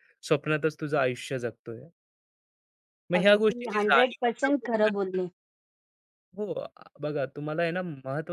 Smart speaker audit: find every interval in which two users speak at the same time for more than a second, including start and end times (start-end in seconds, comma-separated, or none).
3.2-4.7